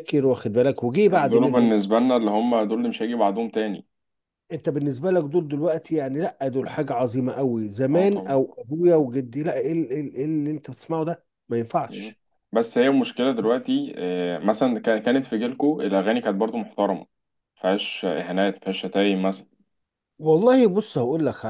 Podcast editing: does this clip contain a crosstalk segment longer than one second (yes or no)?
no